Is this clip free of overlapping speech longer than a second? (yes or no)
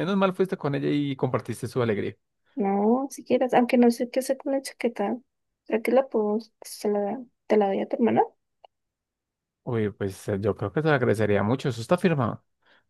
yes